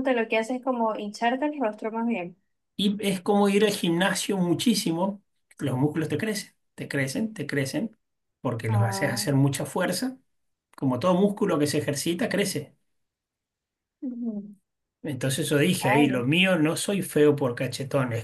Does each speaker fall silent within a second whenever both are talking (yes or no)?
yes